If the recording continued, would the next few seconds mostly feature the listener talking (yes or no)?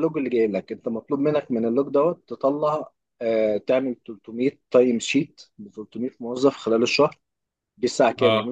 no